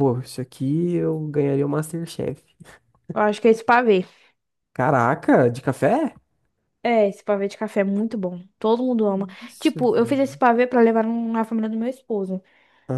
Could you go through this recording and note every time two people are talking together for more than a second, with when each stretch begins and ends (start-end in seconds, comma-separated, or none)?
none